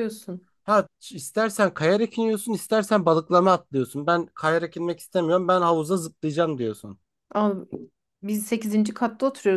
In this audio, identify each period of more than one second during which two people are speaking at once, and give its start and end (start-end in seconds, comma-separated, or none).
none